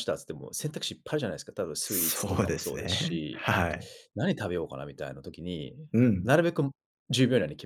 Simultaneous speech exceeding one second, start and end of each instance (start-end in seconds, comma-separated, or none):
1.8-3.5